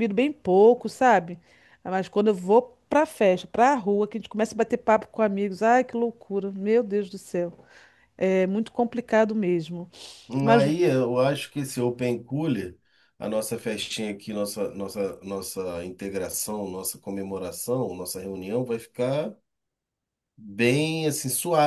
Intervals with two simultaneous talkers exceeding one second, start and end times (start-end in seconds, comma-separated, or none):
none